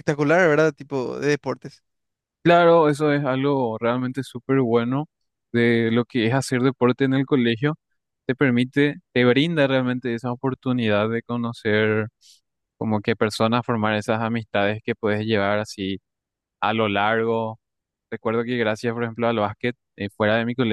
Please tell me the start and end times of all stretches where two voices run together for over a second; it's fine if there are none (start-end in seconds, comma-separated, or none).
none